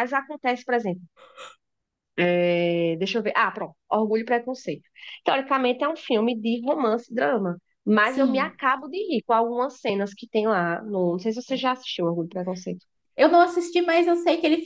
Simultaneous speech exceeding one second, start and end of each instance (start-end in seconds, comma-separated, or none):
none